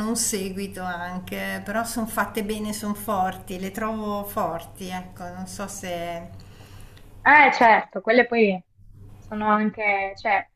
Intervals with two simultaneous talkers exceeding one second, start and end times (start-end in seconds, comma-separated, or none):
none